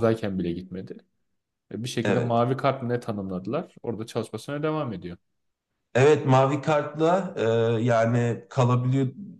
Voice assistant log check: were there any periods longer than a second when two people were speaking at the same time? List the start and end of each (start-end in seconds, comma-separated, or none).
none